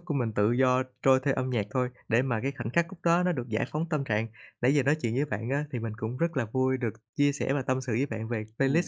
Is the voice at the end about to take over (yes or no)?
yes